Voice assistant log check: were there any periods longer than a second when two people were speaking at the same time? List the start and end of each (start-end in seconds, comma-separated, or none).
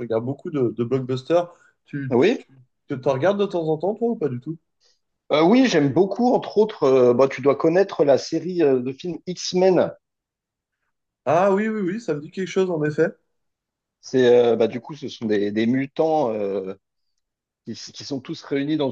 none